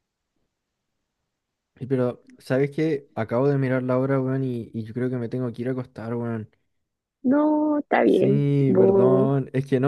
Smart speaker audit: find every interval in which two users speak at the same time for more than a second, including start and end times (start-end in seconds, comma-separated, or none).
8.0-9.3